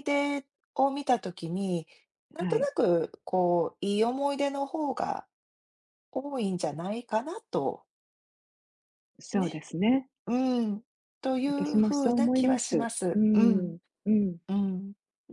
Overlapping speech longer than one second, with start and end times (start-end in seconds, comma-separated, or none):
11.5-13.7